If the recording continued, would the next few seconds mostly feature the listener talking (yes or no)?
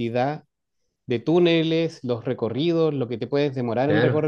yes